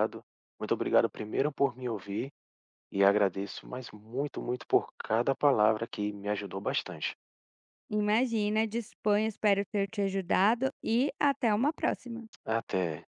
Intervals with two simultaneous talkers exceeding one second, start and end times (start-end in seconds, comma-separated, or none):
none